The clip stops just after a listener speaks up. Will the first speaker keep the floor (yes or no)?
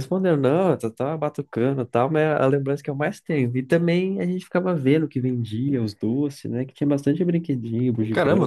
no